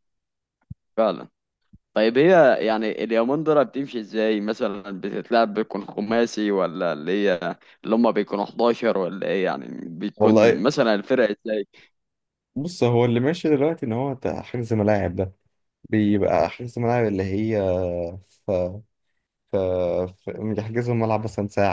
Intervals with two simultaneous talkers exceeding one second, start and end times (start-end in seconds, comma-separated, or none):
none